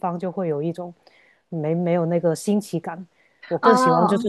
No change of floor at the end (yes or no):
yes